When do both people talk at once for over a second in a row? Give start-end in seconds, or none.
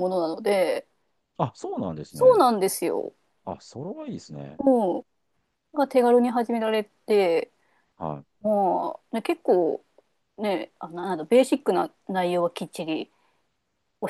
none